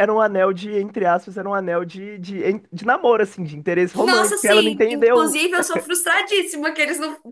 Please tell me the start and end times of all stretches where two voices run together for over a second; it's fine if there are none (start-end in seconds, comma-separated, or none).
4.0-5.4